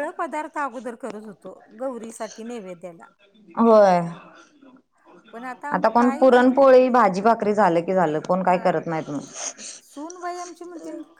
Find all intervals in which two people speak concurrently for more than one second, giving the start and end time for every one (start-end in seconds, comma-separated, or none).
none